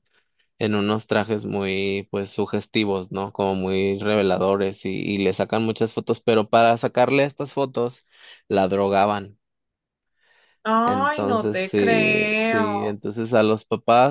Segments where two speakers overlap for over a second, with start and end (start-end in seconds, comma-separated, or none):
10.9-12.7